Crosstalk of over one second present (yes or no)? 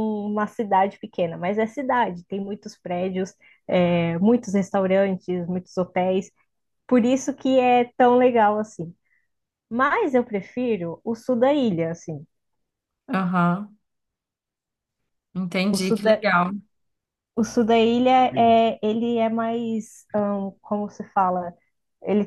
no